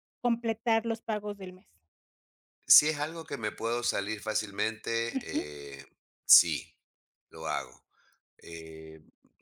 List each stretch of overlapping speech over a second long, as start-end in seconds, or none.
none